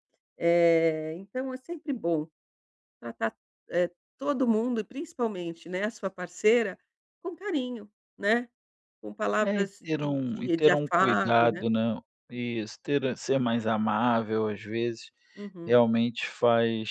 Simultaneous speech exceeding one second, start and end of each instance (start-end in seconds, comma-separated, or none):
9.4-11.7